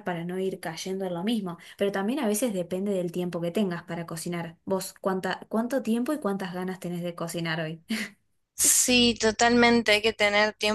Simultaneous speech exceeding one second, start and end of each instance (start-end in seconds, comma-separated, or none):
none